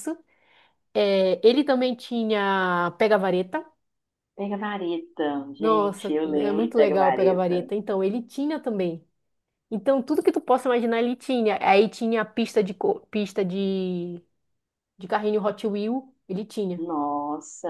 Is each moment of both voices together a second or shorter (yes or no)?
no